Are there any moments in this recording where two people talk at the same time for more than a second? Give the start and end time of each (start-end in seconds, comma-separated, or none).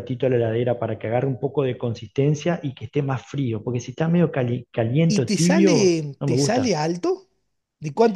5.1-6.8